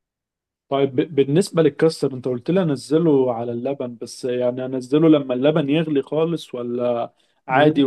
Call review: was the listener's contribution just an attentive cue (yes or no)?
no